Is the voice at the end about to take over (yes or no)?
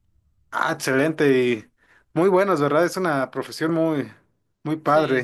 yes